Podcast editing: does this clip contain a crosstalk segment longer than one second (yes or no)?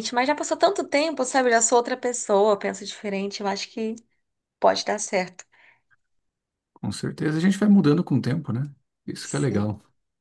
no